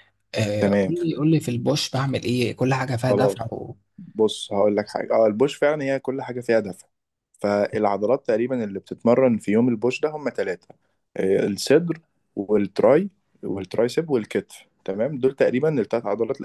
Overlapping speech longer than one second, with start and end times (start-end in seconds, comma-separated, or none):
none